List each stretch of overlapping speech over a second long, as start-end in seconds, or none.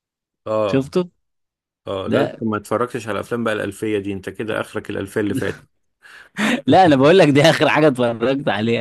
none